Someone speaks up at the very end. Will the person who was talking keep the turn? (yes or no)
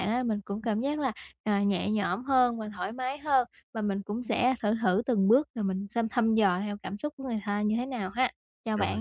no